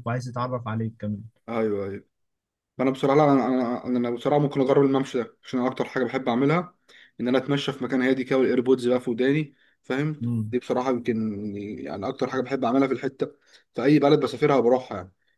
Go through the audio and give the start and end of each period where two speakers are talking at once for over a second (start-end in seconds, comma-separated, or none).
none